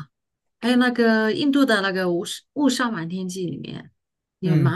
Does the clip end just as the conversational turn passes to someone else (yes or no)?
yes